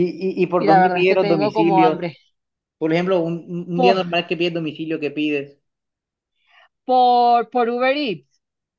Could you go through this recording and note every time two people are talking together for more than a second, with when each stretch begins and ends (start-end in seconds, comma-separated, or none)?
0.6-2.1